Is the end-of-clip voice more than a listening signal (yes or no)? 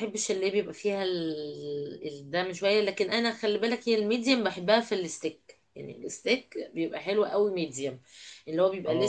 no